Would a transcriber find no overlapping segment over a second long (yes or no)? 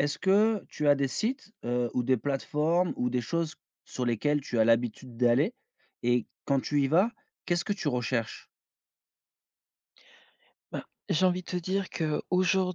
yes